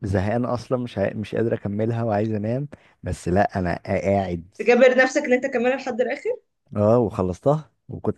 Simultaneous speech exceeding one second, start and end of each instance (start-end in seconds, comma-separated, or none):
none